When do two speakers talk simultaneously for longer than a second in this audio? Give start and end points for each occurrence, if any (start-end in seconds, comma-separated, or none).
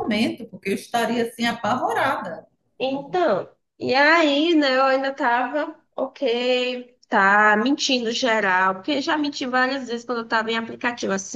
none